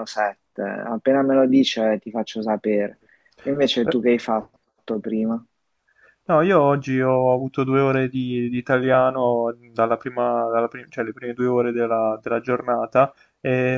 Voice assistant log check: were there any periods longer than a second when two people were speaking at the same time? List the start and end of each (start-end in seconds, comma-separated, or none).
none